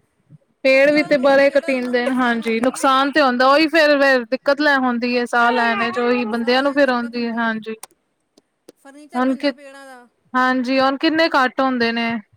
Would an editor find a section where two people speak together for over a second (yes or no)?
yes